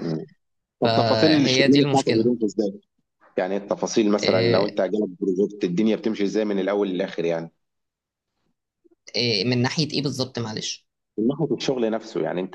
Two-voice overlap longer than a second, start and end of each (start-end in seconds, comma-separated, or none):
0.8-2.3